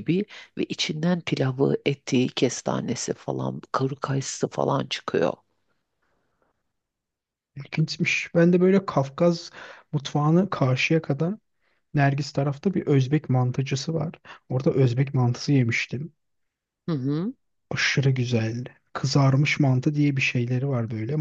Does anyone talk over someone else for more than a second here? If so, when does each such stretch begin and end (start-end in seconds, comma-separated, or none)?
none